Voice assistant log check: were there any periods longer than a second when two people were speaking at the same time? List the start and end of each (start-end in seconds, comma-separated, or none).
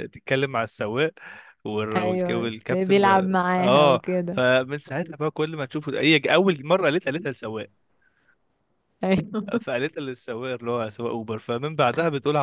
1.9-4.4